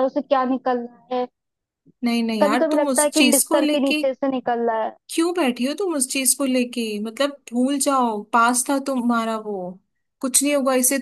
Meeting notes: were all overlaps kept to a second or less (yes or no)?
no